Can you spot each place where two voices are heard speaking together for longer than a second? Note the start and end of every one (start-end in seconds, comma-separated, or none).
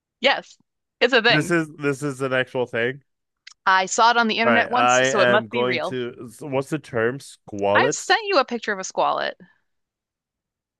4.4-6.0